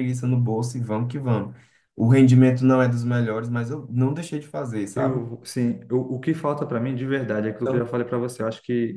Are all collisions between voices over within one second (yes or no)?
yes